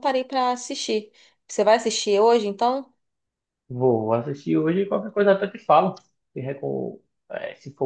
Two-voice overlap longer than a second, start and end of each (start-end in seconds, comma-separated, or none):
none